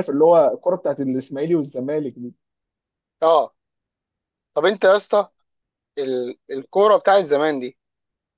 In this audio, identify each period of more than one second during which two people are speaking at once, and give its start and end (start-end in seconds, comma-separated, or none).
none